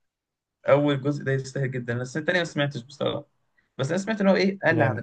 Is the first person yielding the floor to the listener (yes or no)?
no